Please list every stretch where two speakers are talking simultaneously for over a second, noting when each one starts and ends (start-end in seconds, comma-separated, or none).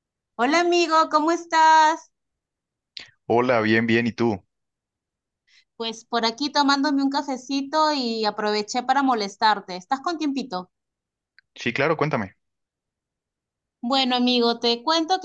none